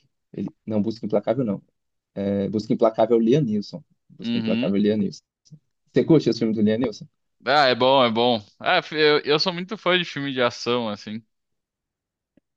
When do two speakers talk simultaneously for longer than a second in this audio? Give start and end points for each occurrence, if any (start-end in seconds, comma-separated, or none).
none